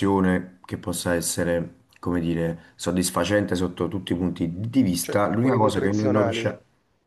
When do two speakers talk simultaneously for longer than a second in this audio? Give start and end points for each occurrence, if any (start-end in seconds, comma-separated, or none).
5.0-6.5